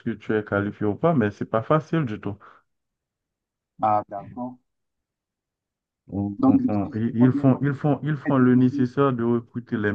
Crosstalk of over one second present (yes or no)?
yes